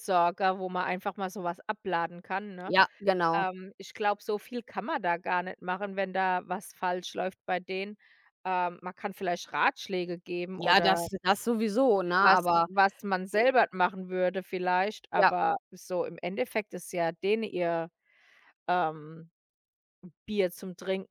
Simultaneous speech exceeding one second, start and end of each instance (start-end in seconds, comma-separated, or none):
none